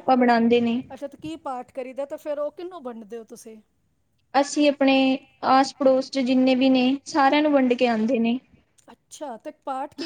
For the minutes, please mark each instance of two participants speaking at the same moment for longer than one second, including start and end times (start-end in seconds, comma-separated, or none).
none